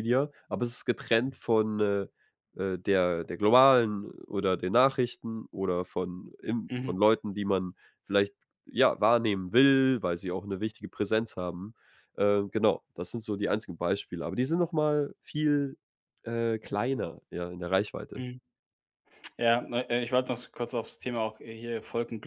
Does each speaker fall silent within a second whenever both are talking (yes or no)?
yes